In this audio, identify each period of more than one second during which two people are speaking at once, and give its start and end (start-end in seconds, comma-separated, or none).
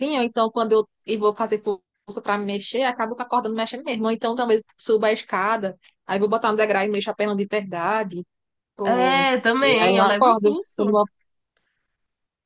8.8-11.0